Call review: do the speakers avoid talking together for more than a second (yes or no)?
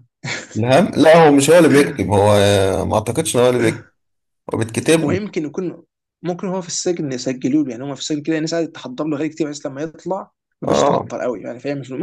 yes